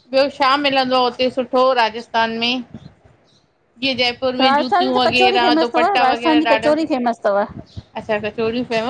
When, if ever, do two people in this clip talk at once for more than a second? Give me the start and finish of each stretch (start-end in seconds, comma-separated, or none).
4.4-6.7